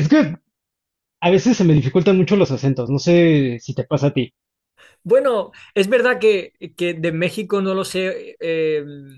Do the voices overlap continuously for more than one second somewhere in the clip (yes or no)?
no